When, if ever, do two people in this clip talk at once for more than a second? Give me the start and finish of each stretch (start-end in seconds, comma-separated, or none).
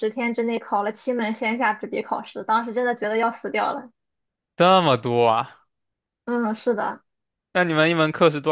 none